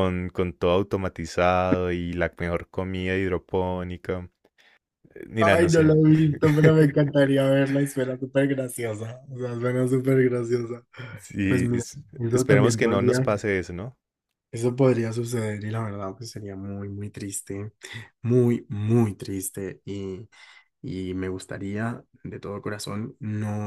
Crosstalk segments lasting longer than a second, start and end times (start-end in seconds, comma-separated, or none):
11.5-13.3